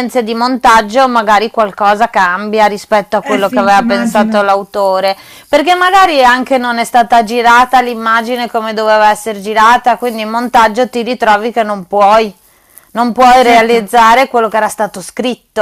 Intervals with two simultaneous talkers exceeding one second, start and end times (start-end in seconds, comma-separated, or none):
3.2-4.5